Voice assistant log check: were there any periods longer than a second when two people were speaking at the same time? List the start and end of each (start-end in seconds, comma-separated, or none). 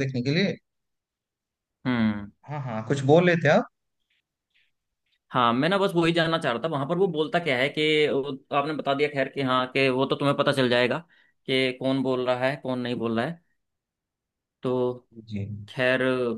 none